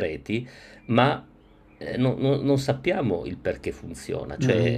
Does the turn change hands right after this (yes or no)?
yes